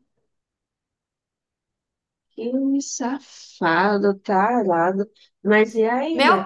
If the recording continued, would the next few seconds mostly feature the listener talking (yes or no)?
yes